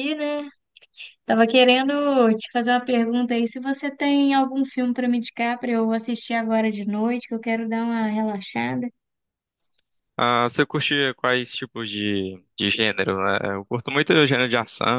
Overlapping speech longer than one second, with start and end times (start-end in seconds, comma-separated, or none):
none